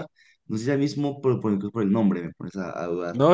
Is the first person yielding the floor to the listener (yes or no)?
yes